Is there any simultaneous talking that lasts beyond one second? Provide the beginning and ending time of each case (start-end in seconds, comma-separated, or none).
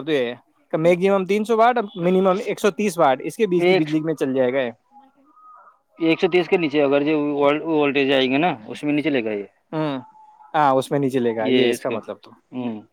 none